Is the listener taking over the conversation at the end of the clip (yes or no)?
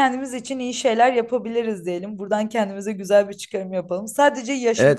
no